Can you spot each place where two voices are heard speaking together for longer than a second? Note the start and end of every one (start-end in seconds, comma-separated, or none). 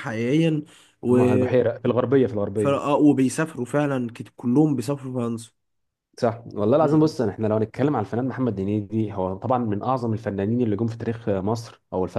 none